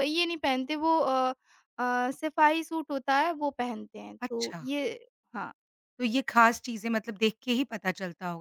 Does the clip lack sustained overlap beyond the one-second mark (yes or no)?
yes